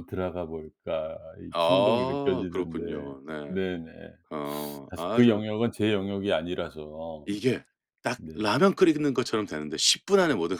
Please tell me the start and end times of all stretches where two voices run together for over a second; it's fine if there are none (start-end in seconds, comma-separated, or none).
1.5-2.8